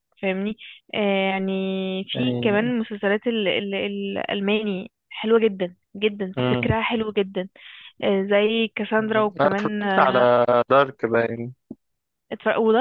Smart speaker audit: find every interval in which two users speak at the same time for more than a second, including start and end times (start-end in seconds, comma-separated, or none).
9.0-10.3